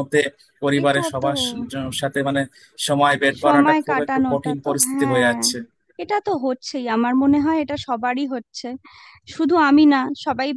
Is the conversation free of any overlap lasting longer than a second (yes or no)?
no